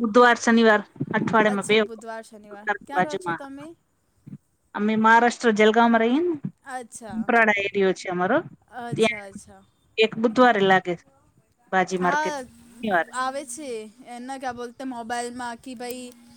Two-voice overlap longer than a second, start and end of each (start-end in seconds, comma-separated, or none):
1.5-3.4